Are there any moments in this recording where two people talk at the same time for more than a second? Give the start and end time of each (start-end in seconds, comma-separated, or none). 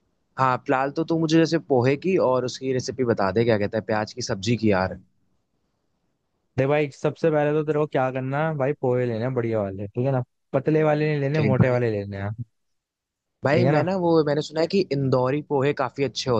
none